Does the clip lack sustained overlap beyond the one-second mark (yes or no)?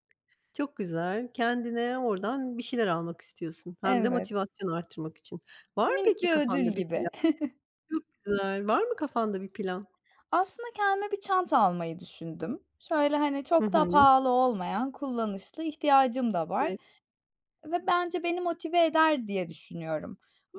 no